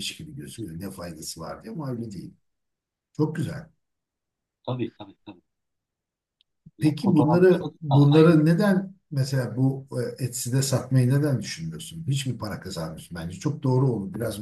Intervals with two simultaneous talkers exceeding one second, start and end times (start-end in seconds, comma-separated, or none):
6.8-8.4